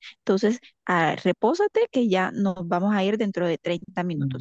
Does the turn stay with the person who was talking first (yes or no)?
no